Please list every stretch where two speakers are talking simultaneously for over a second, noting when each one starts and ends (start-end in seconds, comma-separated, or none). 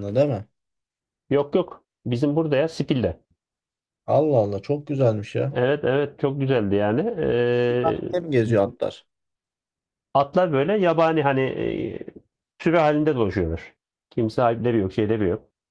none